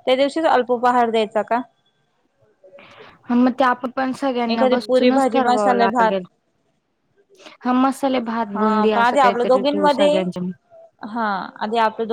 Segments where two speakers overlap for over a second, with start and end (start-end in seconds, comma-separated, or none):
4.5-6.2, 8.6-10.2